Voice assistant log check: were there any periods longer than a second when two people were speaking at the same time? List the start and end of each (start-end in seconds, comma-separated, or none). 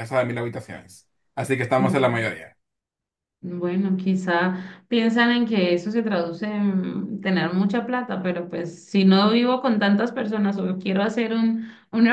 none